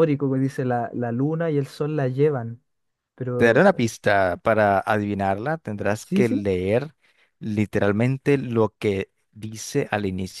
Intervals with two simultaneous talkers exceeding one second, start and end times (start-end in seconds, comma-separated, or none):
none